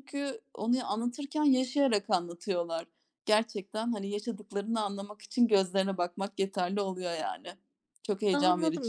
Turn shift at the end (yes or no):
yes